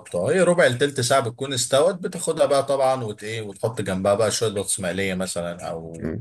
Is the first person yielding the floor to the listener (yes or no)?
yes